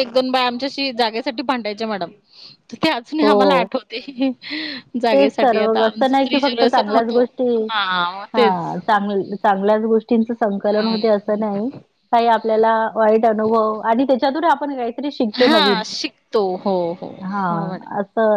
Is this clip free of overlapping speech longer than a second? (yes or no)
no